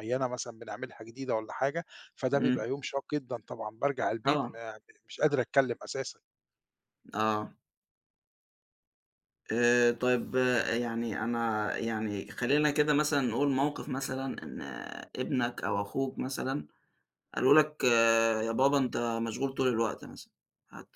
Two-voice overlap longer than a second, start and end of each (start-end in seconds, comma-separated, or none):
none